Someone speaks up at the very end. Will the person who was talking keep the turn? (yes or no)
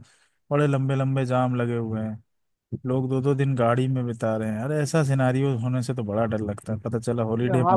no